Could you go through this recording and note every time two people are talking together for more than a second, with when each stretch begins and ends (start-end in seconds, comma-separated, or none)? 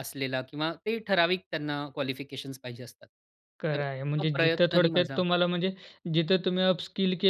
3.7-5.2